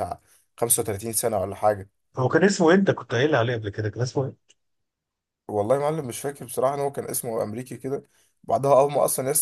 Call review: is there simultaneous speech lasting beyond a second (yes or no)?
no